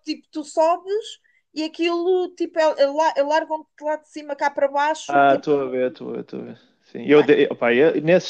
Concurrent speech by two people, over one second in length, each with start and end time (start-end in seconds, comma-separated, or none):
none